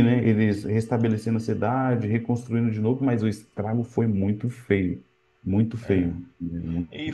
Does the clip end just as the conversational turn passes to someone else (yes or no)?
yes